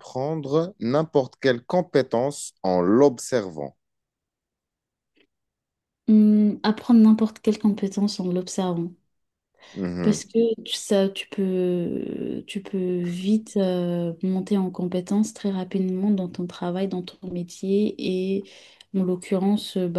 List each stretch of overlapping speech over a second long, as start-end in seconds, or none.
none